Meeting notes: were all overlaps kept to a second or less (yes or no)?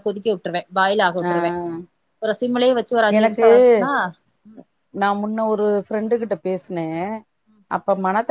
yes